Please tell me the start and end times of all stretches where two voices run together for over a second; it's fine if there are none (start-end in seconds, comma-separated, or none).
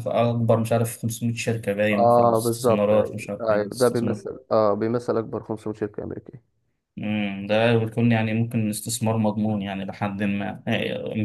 1.9-3.7